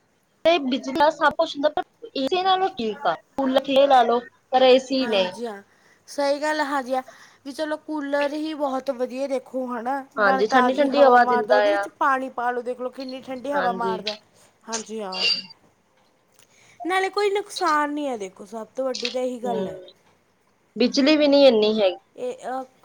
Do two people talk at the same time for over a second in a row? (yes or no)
yes